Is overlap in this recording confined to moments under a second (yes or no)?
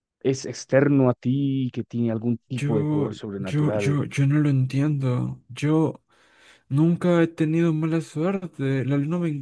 no